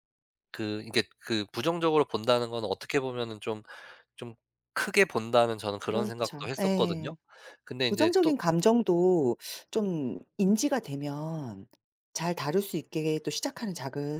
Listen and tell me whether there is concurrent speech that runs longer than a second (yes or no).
yes